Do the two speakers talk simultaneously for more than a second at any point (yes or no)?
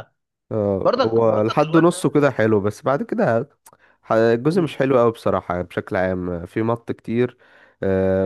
yes